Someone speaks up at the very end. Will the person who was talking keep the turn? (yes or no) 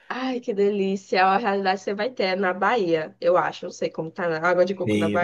no